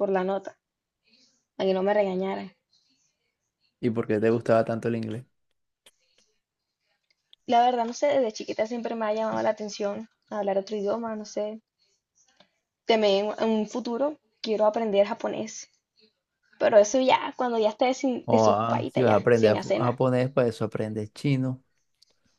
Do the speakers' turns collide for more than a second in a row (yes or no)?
yes